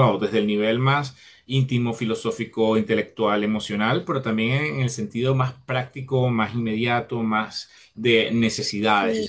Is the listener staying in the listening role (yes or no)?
no